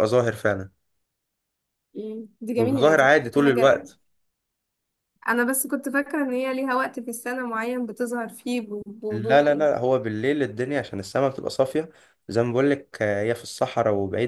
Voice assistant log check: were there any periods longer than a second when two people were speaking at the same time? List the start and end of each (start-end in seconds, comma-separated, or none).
2.5-3.8